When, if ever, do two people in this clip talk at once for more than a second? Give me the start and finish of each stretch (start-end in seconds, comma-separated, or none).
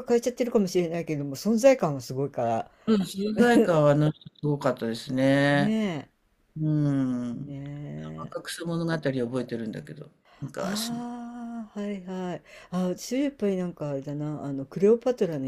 none